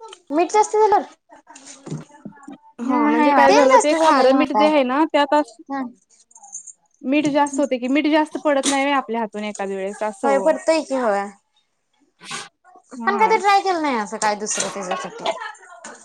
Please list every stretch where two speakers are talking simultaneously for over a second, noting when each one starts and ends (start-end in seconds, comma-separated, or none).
3.0-4.7